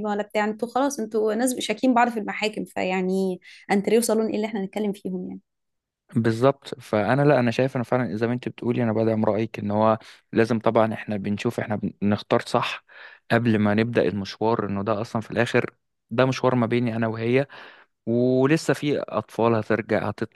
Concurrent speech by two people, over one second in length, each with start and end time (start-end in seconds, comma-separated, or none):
none